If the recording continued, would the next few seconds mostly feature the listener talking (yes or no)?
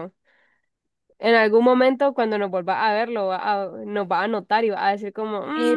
yes